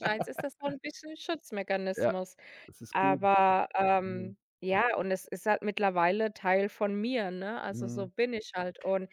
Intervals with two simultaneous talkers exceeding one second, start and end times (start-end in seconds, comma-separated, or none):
none